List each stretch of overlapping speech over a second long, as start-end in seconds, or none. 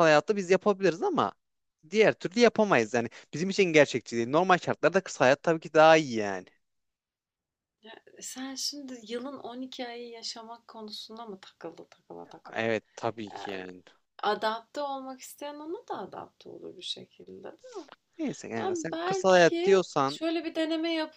18.6-20.2